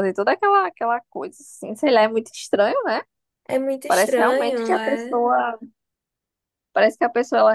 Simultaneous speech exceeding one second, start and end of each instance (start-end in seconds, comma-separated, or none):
3.9-5.2